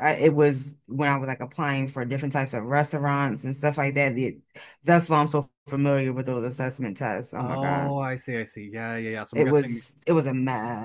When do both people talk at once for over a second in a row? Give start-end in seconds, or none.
none